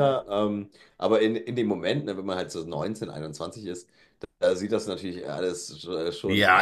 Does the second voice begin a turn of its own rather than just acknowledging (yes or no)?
yes